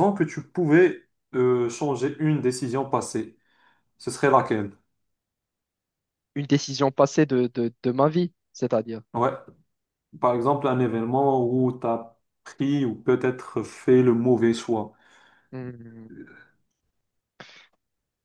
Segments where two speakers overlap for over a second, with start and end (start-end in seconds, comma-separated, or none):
none